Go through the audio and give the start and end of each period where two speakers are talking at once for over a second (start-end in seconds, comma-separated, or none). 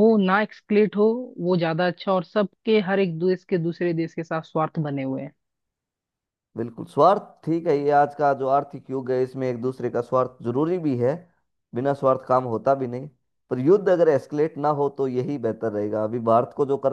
none